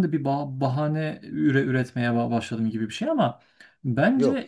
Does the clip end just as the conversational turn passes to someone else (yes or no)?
no